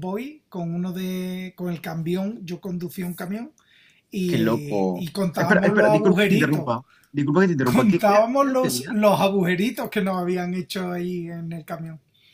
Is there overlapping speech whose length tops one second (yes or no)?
yes